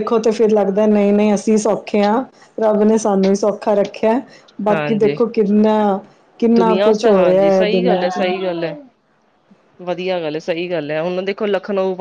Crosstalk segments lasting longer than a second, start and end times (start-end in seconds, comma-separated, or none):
6.6-8.3